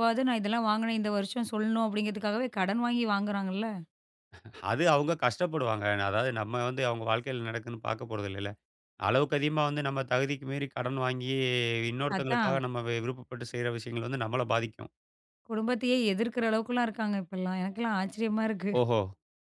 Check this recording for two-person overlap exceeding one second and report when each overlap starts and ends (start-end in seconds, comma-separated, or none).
none